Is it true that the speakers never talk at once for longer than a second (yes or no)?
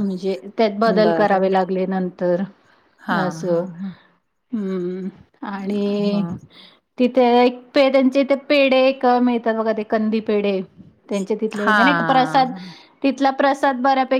yes